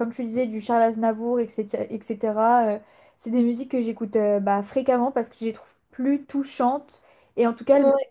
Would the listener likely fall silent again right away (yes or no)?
yes